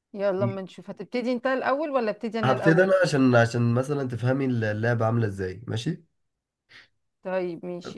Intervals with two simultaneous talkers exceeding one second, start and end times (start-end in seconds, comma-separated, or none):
none